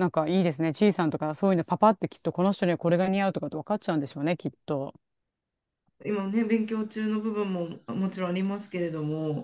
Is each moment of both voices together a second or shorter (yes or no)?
yes